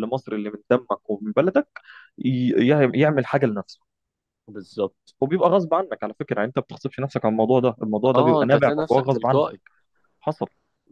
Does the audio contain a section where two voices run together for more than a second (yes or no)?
yes